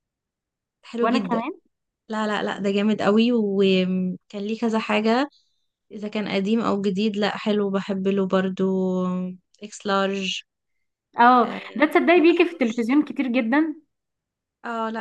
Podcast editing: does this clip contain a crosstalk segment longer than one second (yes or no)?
yes